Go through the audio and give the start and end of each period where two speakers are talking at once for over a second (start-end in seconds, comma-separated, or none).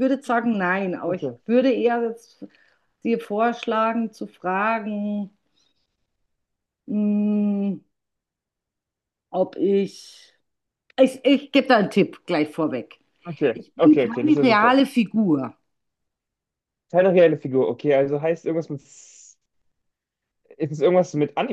13.5-14.8